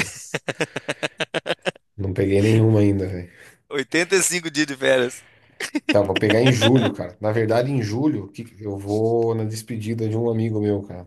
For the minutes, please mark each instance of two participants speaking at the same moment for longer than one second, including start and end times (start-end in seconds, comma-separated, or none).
none